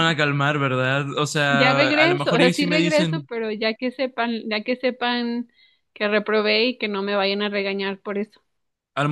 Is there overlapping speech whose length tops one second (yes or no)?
yes